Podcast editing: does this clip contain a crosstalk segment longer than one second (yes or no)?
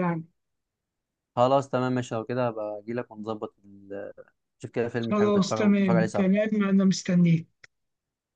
yes